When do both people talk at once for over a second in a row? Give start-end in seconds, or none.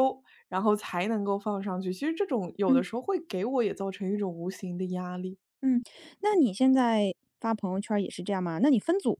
none